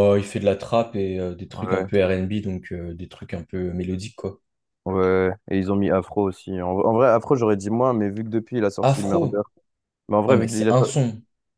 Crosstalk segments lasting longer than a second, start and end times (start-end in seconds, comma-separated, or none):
none